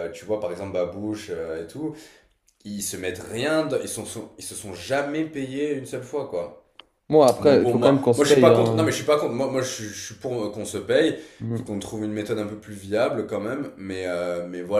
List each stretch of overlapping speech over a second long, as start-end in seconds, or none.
7.4-8.9